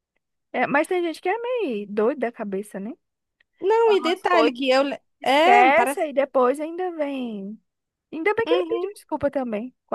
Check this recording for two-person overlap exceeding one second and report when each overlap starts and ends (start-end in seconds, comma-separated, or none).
3.8-6.1